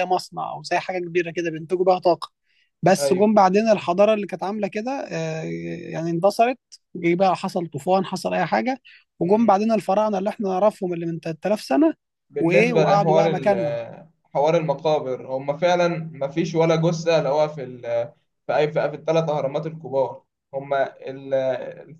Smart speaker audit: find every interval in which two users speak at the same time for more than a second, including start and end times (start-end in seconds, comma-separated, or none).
12.4-13.8